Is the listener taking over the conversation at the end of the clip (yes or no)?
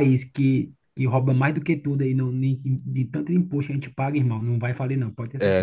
yes